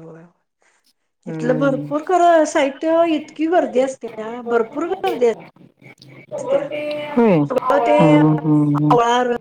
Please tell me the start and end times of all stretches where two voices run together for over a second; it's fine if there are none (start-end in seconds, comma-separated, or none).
7.5-8.9